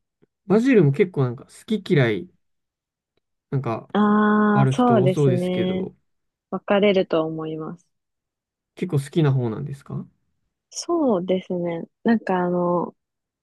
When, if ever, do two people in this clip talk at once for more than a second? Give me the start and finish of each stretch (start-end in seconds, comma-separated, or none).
4.5-5.9